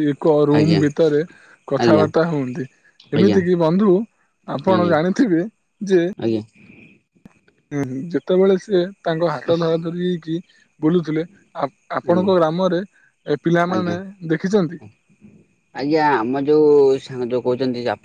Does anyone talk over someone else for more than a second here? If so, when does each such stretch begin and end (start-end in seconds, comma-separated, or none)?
none